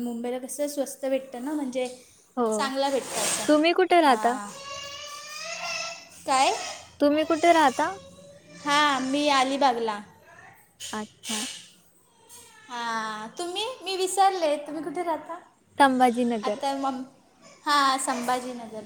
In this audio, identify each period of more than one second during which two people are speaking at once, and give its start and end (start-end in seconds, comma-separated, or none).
none